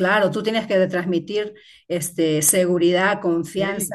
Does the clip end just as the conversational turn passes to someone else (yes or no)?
no